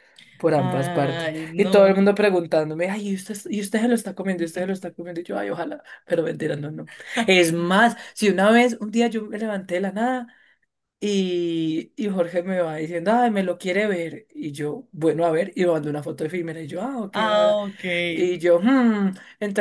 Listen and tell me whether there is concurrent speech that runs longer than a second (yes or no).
yes